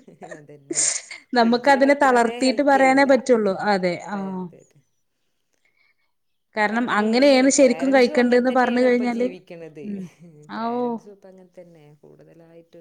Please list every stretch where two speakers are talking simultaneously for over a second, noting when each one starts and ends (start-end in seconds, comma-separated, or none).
1.4-3.1, 7.6-9.3